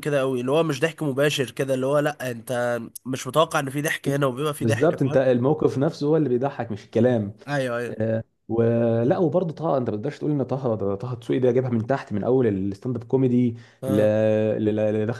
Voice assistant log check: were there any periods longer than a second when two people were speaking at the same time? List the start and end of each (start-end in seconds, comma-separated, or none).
none